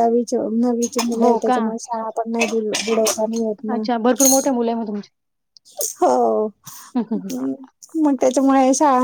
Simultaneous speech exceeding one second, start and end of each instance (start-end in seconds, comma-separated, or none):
none